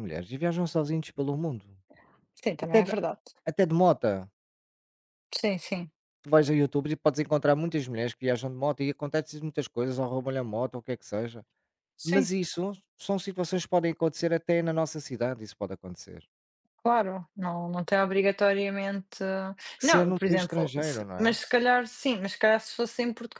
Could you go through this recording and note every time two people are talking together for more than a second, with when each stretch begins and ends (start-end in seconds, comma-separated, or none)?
19.8-21.4